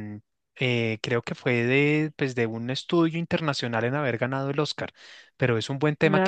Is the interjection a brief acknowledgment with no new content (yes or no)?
yes